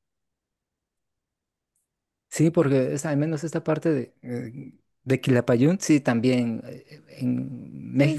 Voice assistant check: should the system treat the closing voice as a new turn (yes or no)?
no